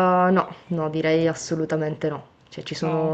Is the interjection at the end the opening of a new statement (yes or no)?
no